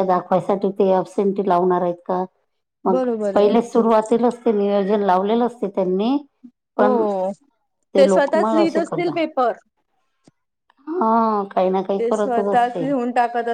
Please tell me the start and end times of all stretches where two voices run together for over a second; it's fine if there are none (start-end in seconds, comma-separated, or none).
8.1-9.4